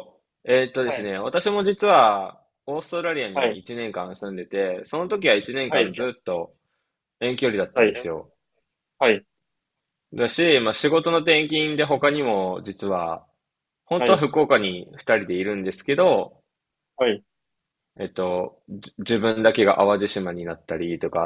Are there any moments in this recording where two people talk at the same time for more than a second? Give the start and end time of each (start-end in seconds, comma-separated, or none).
none